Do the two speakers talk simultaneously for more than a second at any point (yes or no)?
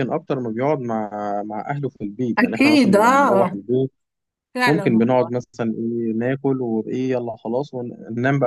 yes